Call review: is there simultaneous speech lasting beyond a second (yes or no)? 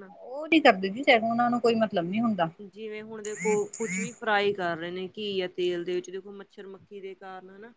no